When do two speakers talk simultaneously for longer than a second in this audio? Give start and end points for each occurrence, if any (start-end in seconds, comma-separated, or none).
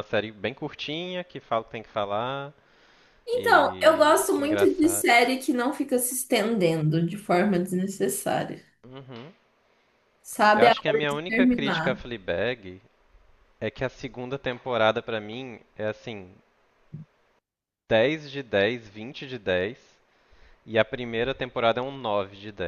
3.3-5.0, 10.6-12.1